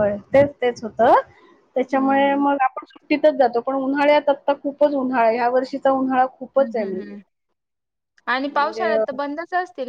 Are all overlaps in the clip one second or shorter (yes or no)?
yes